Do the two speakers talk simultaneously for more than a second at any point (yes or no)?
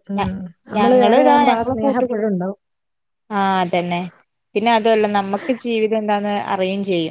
yes